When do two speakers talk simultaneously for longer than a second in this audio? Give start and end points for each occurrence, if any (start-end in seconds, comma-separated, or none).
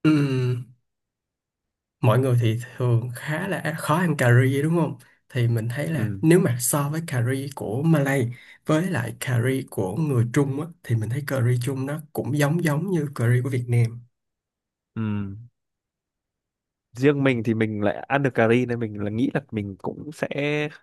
none